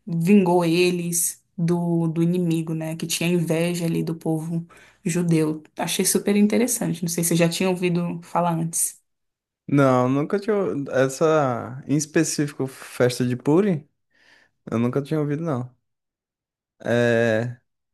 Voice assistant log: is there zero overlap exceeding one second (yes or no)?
yes